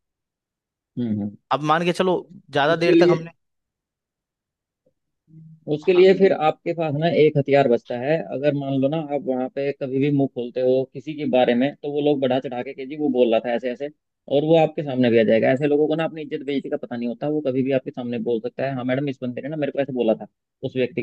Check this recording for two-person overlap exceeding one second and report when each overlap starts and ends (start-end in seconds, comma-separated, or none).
none